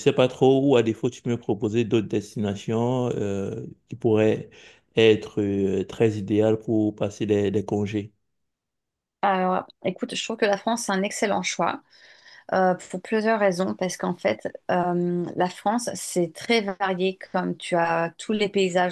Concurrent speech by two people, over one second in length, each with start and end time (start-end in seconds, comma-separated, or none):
none